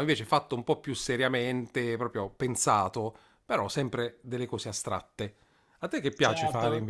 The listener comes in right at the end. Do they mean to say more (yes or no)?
yes